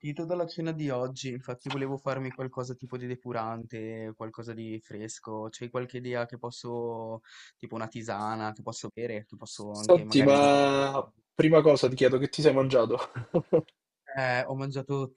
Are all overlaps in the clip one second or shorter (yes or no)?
no